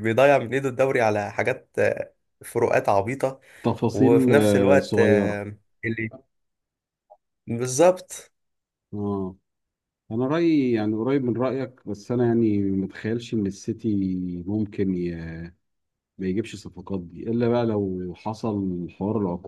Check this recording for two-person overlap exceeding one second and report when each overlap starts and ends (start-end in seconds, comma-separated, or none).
3.9-5.4